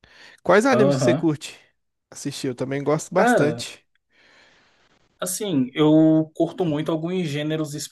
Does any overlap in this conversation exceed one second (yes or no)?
no